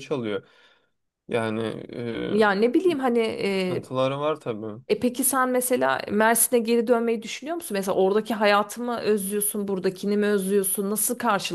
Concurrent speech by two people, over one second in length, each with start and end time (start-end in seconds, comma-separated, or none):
none